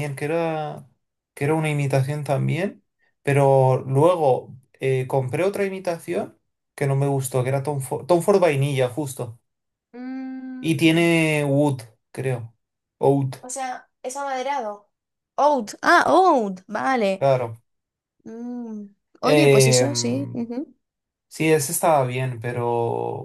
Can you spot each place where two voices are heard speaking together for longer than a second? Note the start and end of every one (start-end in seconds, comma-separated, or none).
19.2-20.4